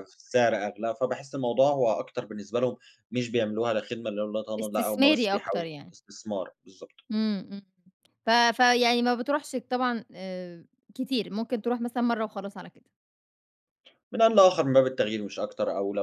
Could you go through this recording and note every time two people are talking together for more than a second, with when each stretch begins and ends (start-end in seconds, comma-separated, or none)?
4.6-5.9